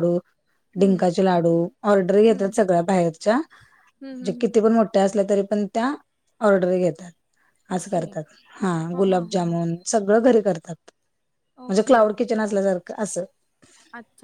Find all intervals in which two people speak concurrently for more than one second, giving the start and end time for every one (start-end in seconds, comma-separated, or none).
none